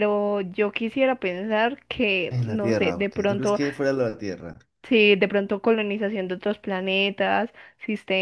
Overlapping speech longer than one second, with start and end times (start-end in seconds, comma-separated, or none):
2.3-3.6